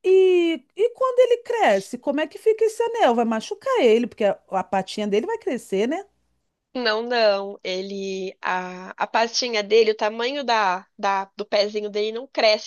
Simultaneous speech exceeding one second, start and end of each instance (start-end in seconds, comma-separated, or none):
none